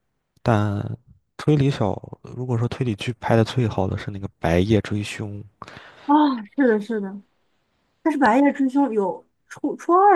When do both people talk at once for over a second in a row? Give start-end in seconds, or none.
none